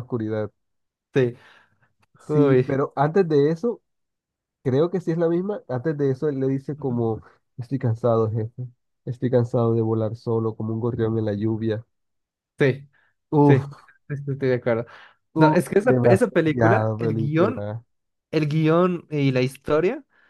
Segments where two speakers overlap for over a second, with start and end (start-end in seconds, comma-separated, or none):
15.4-17.7